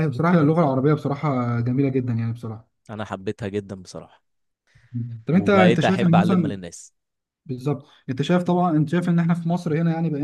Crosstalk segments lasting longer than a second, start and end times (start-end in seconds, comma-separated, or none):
5.3-6.6